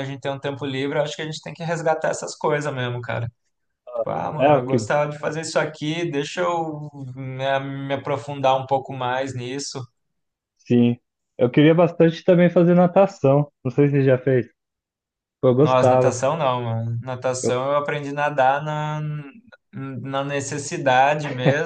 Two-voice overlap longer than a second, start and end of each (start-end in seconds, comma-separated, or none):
none